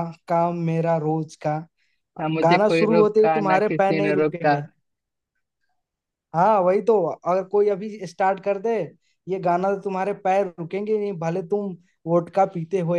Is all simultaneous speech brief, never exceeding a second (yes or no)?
no